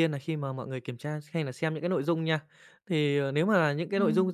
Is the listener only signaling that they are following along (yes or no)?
yes